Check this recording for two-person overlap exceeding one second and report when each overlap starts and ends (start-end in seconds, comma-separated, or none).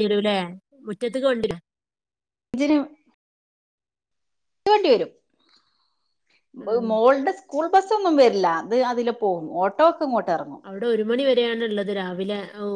none